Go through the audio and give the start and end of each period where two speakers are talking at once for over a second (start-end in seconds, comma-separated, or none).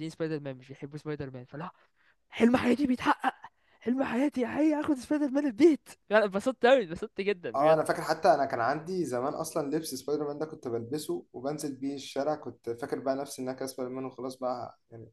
none